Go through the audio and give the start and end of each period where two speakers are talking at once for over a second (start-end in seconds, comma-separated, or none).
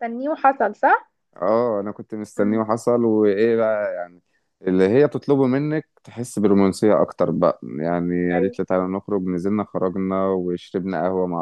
none